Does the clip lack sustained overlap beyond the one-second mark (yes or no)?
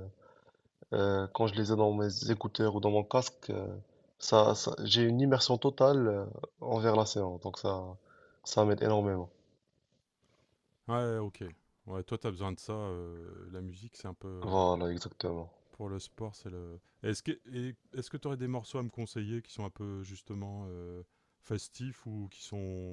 yes